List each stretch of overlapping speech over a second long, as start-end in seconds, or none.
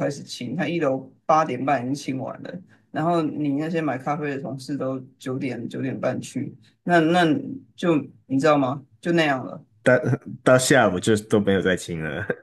none